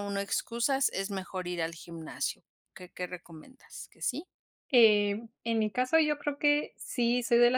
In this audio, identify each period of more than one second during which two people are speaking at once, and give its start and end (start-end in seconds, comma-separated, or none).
none